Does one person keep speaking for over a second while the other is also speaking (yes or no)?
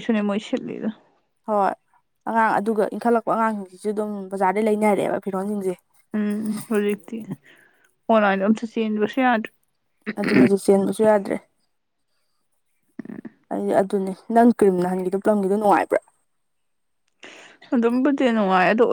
no